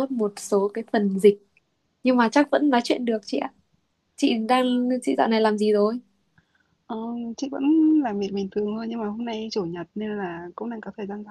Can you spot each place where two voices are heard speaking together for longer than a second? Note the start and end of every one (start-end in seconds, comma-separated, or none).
none